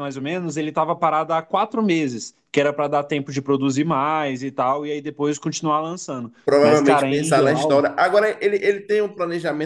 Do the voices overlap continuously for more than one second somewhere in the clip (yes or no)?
yes